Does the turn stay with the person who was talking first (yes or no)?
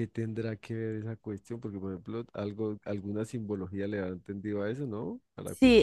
no